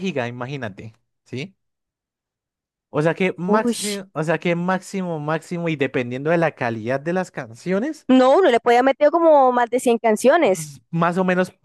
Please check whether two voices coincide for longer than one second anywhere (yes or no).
no